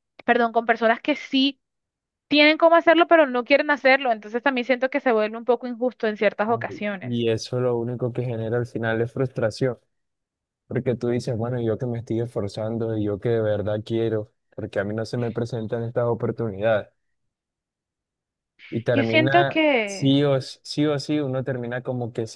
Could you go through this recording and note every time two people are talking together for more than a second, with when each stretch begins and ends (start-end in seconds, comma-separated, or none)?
18.9-20.1